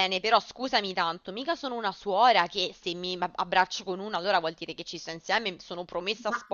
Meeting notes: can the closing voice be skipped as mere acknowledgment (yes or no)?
yes